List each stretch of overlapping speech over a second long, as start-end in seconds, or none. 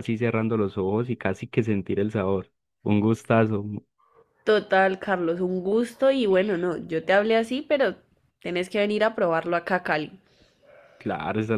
none